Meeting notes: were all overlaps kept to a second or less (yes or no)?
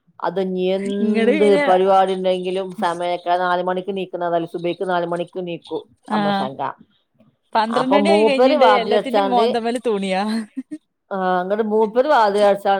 no